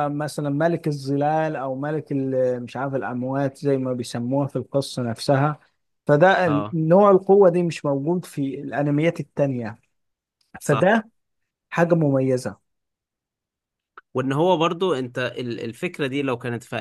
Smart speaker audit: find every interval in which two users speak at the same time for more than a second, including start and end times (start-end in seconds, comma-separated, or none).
none